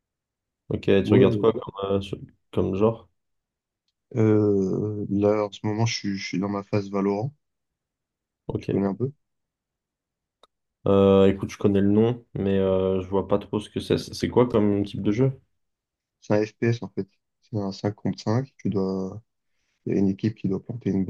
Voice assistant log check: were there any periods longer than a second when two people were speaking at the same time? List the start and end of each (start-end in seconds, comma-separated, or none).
none